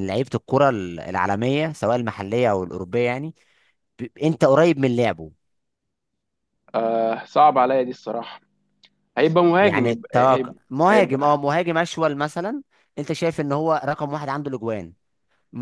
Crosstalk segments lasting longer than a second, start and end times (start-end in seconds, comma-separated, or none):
9.6-11.4